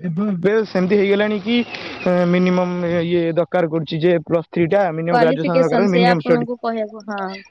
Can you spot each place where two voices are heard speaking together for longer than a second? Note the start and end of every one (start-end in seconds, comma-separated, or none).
5.1-6.5